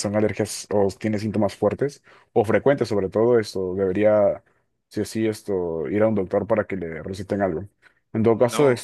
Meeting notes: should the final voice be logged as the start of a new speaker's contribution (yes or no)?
no